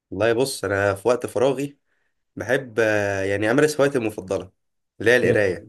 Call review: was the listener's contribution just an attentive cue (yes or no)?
yes